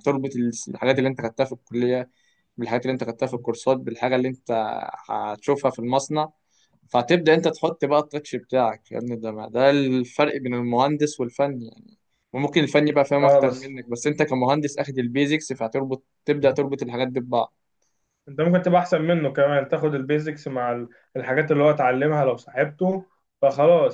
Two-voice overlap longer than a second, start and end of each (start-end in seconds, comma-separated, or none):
none